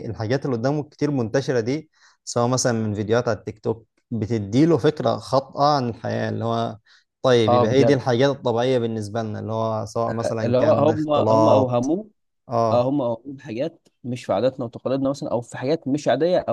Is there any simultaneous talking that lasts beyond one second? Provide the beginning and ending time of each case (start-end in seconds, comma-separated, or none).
10.4-11.9